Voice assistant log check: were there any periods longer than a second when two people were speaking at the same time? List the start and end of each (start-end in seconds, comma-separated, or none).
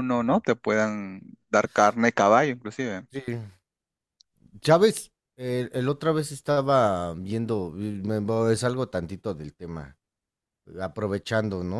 none